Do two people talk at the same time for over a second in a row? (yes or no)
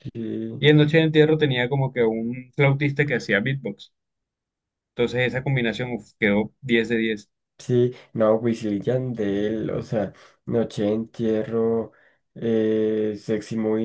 no